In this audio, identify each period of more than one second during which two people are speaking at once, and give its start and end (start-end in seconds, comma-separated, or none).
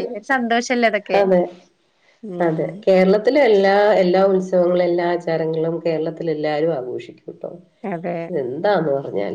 none